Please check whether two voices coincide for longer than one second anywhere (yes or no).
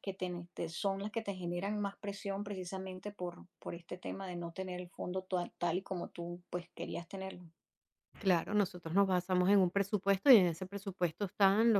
no